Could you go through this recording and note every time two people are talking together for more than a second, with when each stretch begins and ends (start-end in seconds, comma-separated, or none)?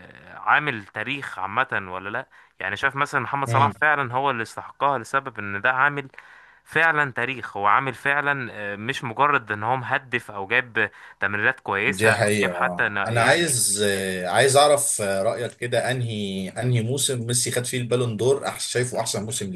11.9-13.6